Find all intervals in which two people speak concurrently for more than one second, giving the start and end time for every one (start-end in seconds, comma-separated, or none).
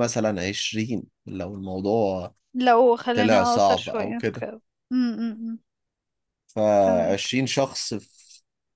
3.1-4.5